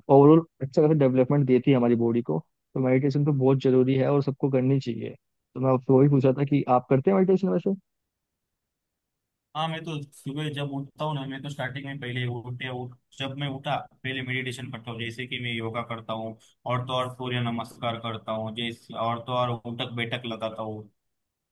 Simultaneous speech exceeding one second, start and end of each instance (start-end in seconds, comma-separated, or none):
none